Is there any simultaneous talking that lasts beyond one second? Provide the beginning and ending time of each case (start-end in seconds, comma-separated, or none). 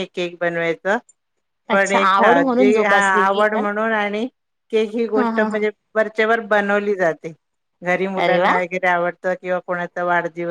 1.7-3.6